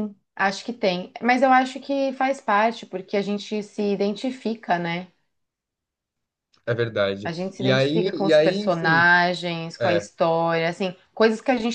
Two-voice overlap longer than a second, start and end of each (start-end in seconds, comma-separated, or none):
7.2-9.0